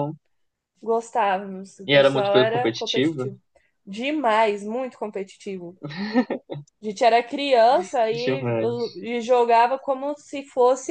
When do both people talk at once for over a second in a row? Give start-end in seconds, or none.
1.9-3.3